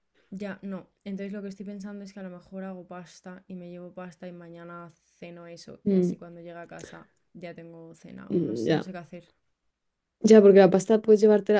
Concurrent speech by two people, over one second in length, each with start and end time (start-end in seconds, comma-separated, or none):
none